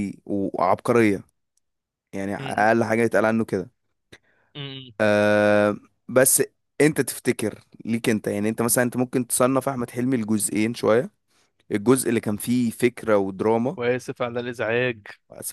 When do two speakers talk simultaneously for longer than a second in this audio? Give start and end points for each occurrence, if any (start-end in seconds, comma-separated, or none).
none